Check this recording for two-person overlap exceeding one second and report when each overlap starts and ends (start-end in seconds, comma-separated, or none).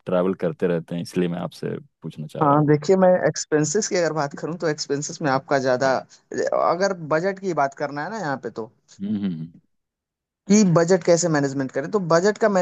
none